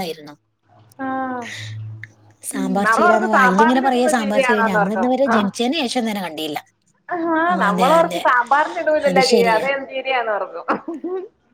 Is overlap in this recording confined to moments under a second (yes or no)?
no